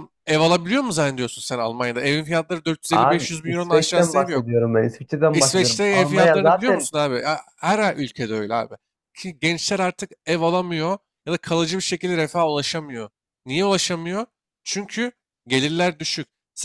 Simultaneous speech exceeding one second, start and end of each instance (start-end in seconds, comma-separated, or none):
2.9-4.5, 5.3-6.9